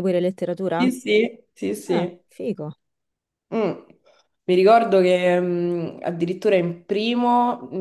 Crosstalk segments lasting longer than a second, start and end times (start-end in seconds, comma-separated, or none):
none